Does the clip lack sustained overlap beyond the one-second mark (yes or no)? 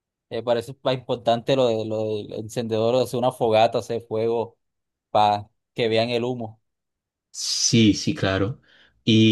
yes